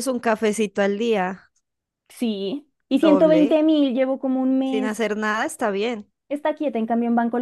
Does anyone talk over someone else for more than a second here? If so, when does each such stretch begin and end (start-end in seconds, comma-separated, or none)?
none